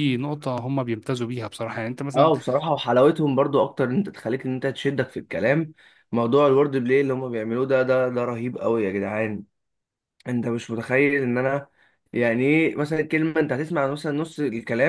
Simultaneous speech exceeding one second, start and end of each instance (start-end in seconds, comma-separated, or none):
none